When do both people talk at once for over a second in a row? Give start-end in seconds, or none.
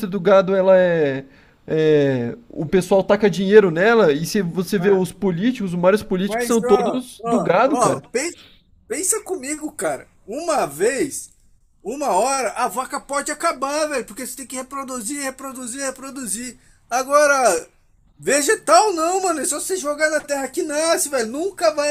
6.3-8.1